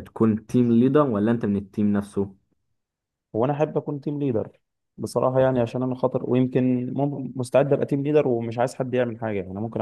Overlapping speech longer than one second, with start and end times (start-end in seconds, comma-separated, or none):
none